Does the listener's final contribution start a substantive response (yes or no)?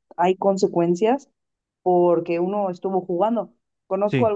no